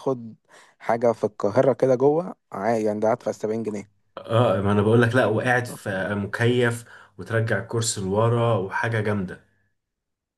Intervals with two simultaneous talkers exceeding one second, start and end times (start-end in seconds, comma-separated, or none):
none